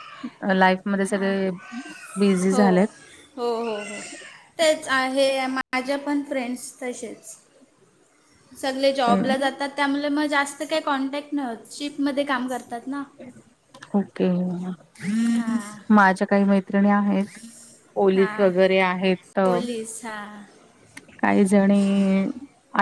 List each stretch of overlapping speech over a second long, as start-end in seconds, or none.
none